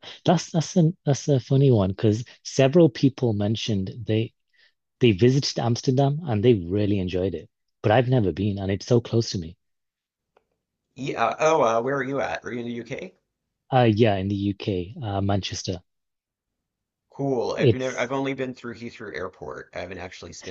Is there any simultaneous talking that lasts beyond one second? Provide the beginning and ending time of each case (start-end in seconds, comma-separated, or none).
none